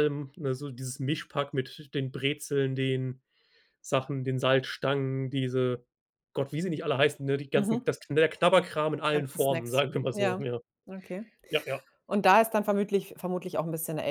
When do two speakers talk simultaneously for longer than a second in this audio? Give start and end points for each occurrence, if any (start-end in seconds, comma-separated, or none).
9.1-10.5